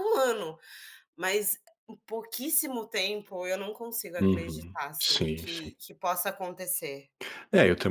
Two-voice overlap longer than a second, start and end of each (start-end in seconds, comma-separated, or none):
4.2-5.7